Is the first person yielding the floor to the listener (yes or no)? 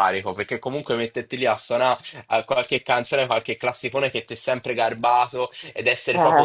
no